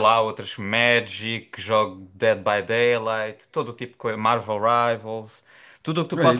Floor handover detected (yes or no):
no